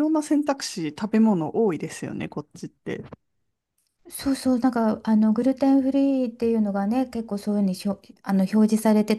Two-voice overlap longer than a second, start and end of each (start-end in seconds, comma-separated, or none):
none